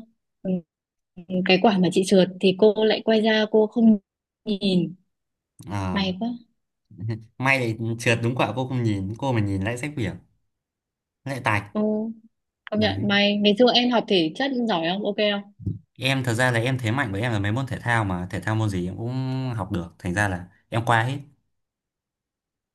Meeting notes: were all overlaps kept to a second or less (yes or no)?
yes